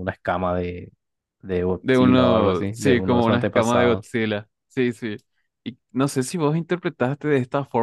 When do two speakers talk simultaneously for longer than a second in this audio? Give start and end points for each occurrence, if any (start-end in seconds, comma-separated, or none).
1.8-4.0